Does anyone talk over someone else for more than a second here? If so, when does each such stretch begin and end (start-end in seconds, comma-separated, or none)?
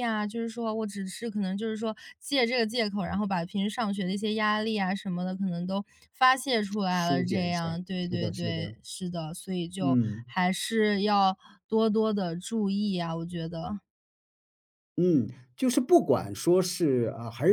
6.9-8.8